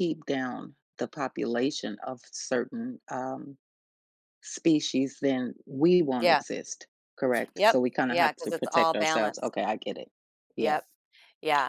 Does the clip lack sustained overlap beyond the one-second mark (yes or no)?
no